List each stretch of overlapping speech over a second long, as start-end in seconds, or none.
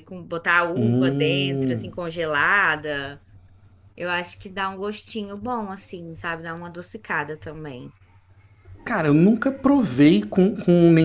0.8-2.0